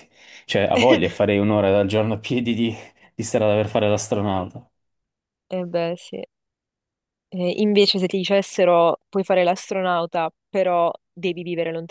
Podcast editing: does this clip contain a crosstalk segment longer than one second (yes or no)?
no